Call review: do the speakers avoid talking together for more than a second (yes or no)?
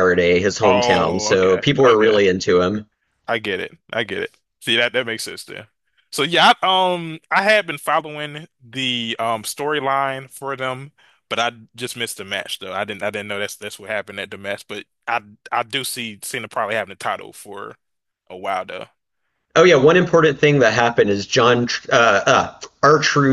no